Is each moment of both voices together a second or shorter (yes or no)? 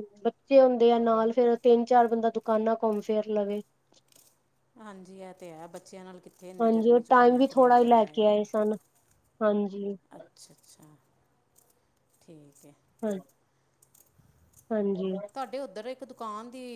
no